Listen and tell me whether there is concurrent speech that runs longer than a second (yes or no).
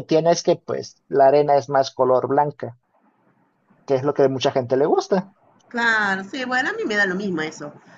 no